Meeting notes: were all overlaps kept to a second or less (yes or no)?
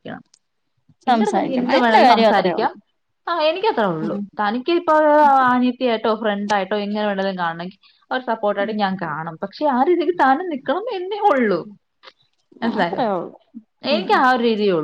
no